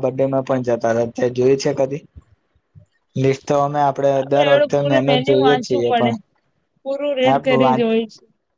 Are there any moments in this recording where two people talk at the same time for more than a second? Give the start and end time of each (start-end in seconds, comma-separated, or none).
4.2-6.1